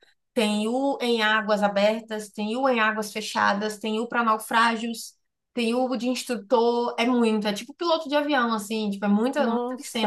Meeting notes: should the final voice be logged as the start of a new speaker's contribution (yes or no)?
yes